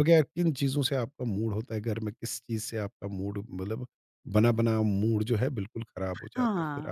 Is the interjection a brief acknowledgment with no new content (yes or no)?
no